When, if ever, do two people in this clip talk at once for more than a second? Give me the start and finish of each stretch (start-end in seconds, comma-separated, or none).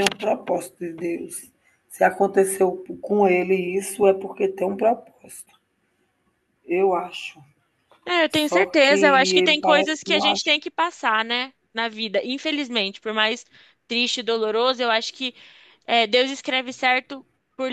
8.3-10.5